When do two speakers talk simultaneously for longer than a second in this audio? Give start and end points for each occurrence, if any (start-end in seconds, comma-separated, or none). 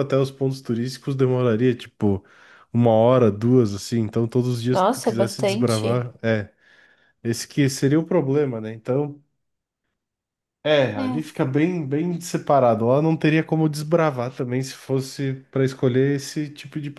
4.7-6.1